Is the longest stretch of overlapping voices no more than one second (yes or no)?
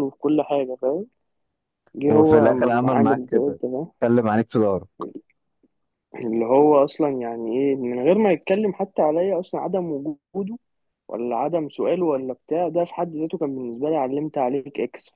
no